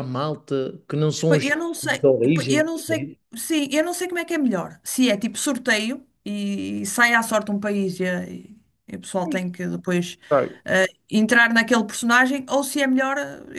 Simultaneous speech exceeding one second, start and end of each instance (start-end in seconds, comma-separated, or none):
1.3-2.6